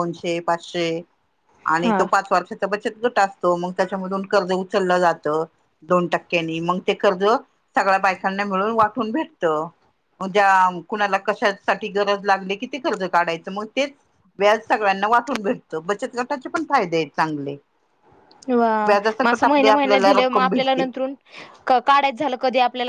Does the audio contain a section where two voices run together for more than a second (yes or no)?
yes